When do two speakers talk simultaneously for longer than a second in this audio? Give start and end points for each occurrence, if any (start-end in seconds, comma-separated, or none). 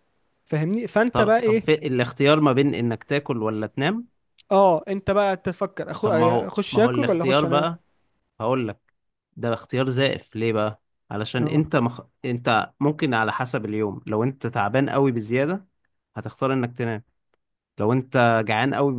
6.0-7.7